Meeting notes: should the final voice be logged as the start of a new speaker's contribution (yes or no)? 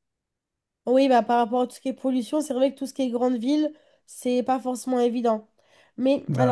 no